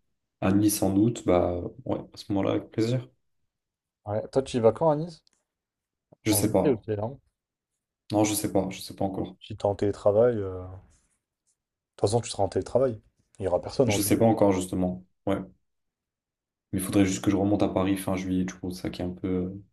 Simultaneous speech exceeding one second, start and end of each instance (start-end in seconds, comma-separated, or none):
none